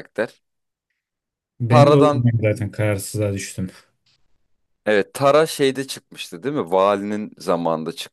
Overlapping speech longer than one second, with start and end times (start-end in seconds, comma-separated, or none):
none